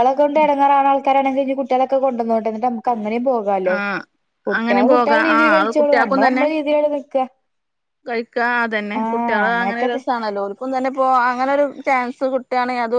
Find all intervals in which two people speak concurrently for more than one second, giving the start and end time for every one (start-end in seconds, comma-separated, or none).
4.5-6.5